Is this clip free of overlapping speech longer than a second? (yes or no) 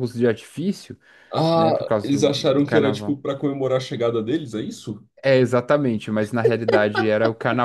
no